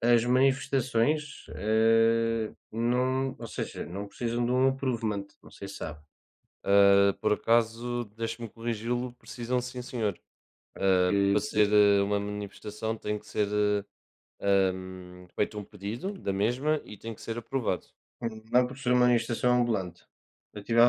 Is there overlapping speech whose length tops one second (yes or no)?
no